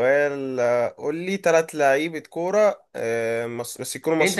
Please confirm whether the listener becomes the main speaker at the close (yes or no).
yes